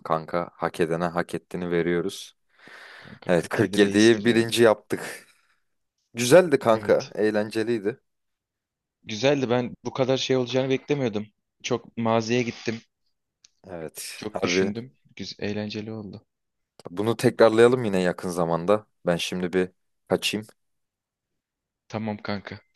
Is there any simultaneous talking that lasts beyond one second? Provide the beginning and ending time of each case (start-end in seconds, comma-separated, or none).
3.3-4.5